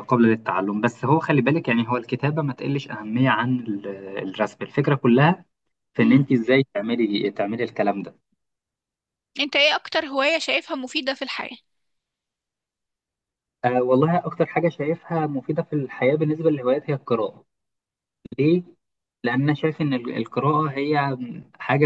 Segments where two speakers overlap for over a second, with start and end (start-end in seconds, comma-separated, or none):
none